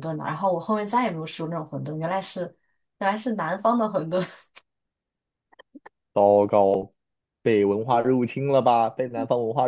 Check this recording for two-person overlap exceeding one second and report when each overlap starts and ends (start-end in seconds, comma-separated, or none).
none